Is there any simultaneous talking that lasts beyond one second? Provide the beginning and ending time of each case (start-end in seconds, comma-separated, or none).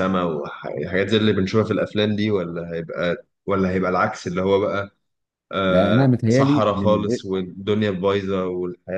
5.7-7.2